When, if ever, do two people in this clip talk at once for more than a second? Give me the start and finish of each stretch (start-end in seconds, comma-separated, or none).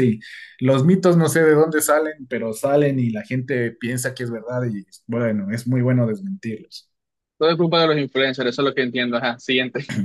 none